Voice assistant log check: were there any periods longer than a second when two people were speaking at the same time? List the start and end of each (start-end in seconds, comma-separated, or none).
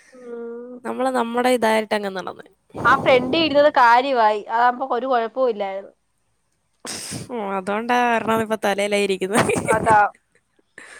none